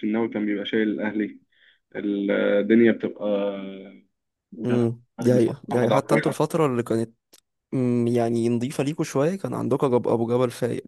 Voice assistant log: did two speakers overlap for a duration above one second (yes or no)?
yes